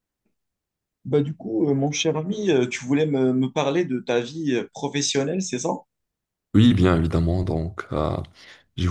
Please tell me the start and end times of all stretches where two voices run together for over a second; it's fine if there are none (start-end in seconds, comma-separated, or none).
none